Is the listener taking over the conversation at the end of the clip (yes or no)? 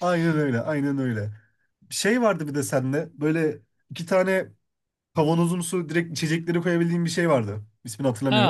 yes